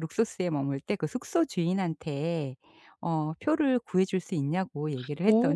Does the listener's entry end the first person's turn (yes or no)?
yes